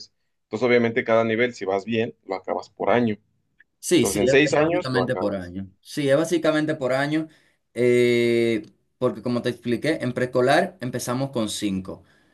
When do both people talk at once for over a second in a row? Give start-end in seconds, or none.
4.0-5.5